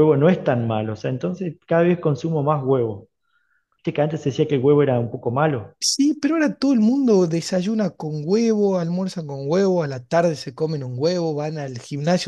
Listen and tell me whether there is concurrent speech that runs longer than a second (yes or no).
no